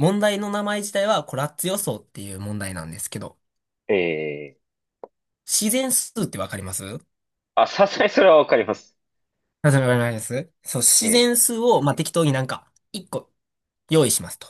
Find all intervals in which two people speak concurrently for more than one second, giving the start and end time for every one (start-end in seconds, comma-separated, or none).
none